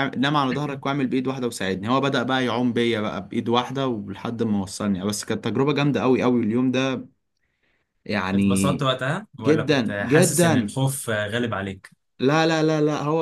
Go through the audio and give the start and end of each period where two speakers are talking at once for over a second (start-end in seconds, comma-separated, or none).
9.4-10.8